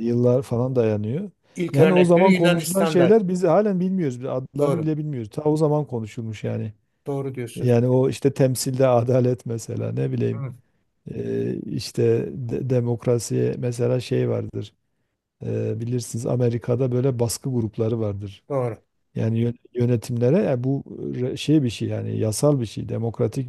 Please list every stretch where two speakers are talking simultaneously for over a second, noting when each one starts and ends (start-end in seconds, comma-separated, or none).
1.7-3.2